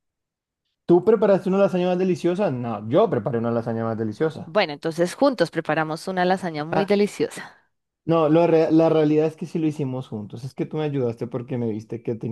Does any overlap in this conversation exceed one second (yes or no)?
no